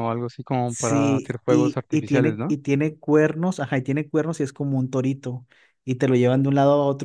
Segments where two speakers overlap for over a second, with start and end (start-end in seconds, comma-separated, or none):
0.7-2.5